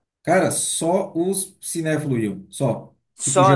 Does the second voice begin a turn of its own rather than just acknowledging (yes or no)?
no